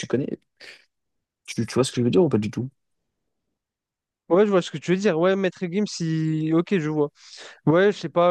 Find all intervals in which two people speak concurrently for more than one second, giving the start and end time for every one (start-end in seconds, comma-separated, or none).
none